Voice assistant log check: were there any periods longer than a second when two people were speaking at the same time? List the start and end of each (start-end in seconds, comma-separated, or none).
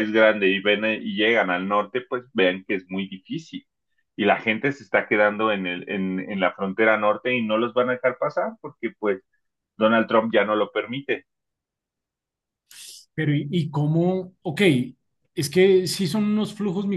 none